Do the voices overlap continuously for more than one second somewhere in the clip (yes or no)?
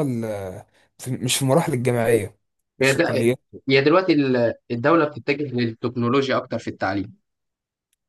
no